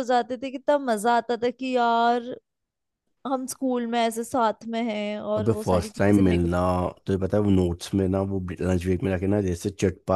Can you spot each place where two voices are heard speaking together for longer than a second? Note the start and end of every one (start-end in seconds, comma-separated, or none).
5.4-6.6